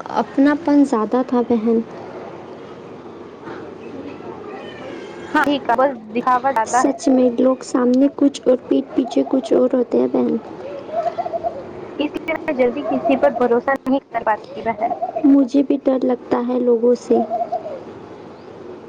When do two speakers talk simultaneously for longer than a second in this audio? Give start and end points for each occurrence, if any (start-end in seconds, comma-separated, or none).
none